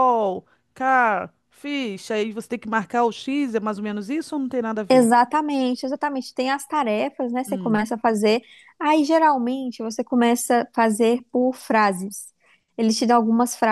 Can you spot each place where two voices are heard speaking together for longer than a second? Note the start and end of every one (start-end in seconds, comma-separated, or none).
none